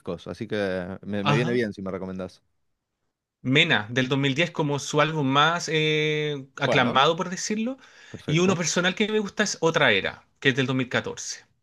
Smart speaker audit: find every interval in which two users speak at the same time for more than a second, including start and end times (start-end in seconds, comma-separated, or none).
none